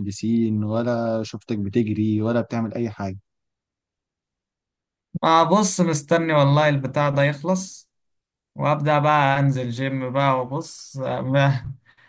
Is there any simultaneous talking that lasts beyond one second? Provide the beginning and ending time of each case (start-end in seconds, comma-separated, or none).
none